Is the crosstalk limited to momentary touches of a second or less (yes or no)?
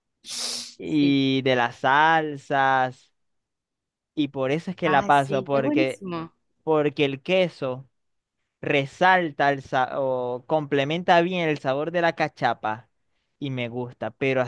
no